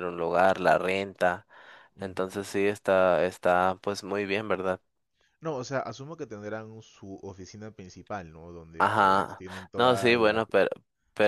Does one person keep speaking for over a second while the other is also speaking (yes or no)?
yes